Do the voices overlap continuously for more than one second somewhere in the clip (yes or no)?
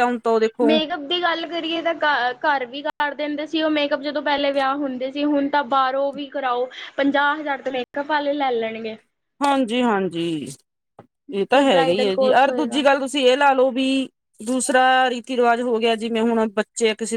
yes